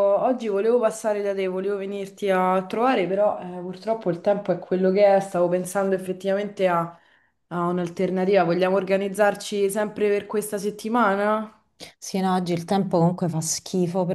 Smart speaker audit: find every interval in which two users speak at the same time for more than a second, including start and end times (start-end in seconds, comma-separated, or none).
none